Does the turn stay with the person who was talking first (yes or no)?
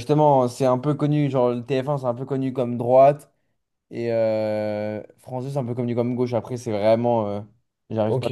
no